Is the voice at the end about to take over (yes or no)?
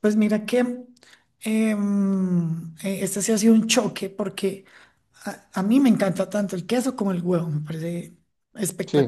no